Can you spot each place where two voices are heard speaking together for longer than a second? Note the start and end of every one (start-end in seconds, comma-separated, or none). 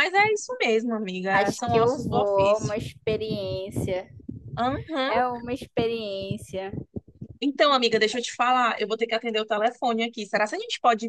1.3-2.8